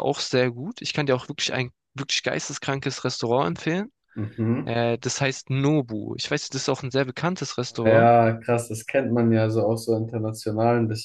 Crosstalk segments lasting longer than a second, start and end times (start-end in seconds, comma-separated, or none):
none